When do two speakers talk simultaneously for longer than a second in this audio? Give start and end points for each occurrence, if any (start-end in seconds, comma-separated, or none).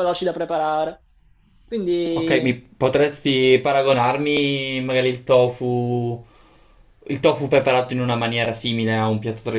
none